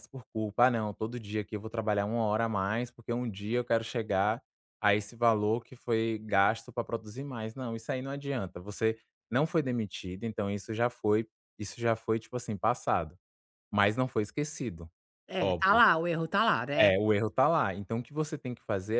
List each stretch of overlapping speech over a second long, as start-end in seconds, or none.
none